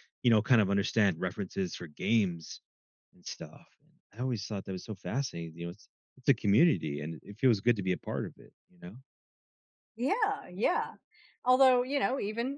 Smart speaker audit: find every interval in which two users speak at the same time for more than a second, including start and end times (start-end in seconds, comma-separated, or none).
none